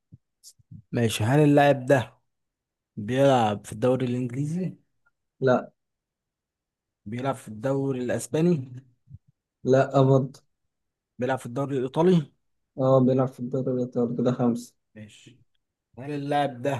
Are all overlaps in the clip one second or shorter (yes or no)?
yes